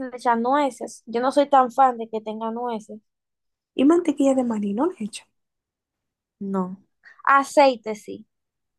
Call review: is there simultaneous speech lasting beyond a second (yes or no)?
no